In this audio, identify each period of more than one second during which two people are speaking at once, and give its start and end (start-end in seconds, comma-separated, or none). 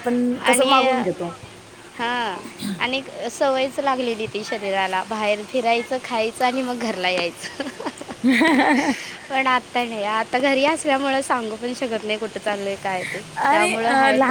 none